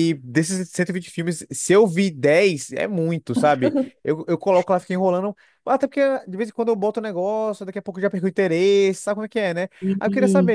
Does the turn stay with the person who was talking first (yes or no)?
yes